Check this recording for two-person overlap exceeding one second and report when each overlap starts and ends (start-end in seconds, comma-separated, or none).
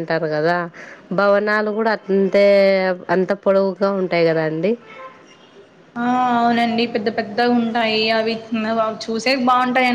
none